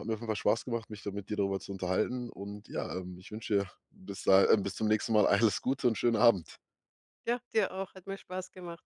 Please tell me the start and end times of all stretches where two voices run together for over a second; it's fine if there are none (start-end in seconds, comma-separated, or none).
none